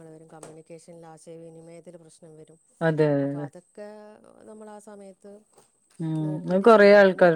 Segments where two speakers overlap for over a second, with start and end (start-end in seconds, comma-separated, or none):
none